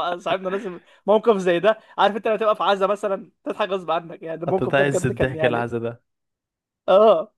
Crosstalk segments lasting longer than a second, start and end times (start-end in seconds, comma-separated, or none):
4.5-5.7